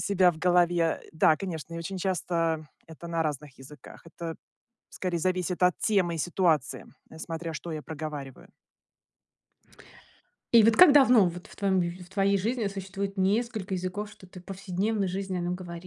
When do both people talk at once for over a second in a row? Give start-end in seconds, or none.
none